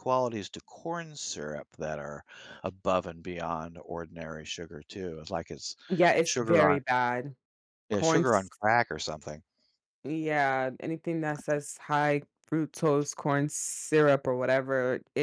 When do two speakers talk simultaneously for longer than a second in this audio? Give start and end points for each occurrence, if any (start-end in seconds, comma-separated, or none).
none